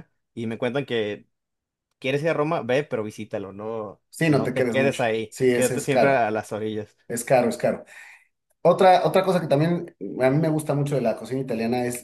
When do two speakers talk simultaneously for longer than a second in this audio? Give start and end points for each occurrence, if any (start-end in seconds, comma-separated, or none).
4.1-6.3